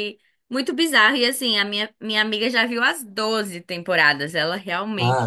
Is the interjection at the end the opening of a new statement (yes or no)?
yes